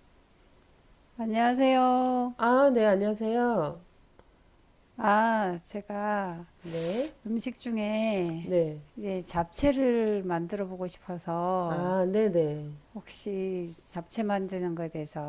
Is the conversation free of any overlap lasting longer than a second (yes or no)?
yes